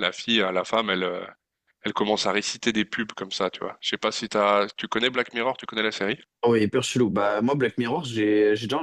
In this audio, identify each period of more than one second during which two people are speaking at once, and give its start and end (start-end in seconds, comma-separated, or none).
none